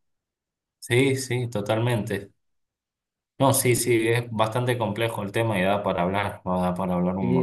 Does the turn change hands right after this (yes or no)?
yes